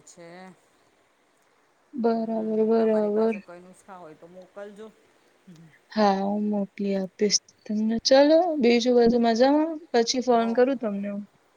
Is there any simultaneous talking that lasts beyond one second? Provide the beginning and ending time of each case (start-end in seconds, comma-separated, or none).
2.1-3.4